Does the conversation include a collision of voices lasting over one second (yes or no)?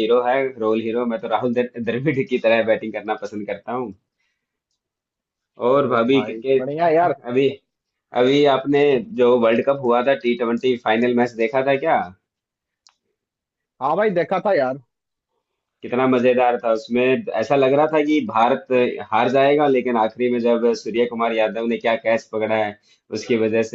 yes